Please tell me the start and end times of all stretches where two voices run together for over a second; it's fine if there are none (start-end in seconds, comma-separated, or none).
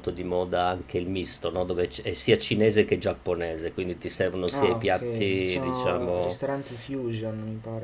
4.5-6.4